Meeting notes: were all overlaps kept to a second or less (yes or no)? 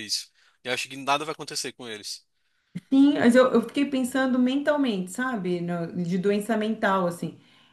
yes